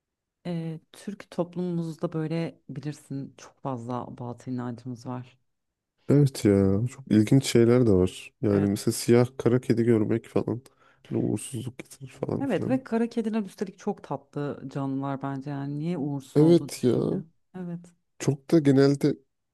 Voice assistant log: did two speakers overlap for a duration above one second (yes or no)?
no